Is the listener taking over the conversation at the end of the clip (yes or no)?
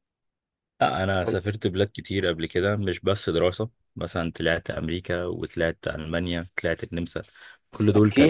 yes